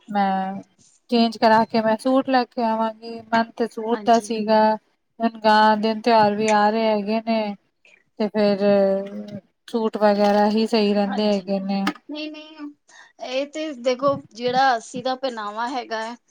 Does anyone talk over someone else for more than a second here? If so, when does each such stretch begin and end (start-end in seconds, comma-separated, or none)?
none